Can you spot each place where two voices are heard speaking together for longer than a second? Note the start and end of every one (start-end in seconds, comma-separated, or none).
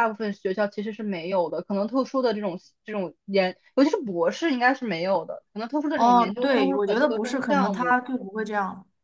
5.9-8.0